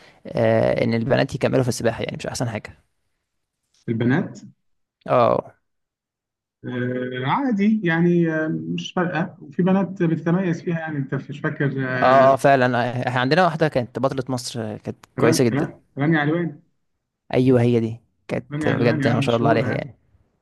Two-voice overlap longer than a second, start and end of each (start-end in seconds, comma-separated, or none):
18.5-19.9